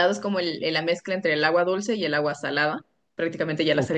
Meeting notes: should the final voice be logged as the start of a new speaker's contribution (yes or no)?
no